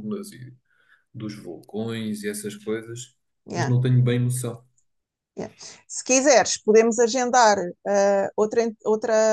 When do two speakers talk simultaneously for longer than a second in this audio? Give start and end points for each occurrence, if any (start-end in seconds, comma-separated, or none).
none